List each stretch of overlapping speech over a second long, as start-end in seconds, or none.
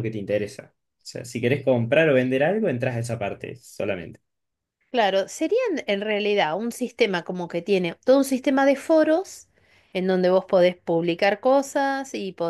none